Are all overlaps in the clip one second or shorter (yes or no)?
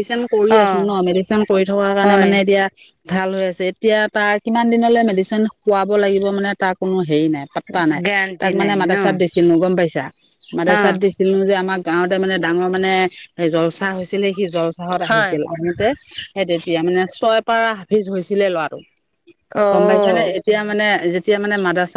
yes